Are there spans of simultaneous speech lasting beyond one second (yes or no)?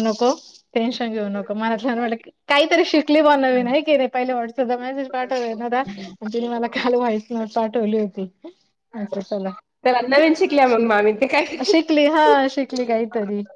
yes